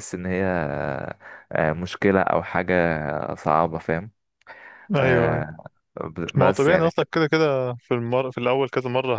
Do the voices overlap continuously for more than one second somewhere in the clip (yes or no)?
no